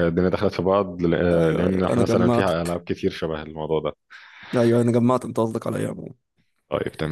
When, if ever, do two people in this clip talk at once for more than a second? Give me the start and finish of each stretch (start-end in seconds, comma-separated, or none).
1.3-2.8